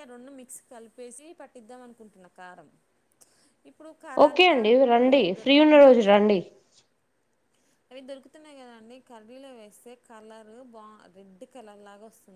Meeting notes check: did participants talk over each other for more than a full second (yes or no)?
yes